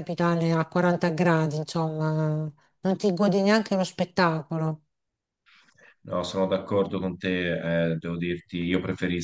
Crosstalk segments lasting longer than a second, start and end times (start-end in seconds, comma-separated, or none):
none